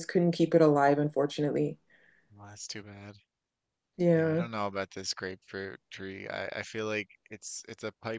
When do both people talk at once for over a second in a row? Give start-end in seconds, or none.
none